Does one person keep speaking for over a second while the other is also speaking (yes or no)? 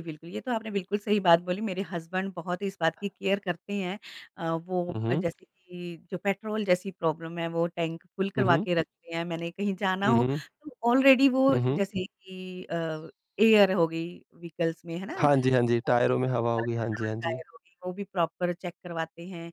yes